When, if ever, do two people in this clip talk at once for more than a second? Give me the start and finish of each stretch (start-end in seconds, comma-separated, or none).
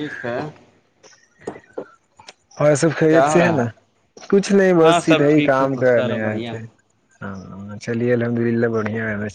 4.8-6.6